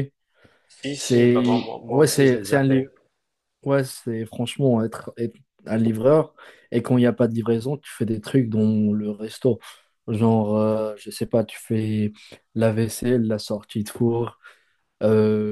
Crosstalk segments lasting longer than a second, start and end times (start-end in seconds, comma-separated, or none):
0.9-2.9